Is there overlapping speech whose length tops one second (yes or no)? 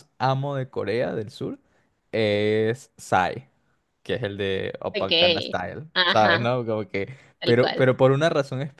yes